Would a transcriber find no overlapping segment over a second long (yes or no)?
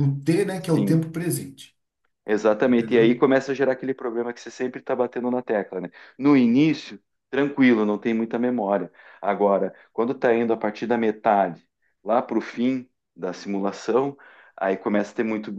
yes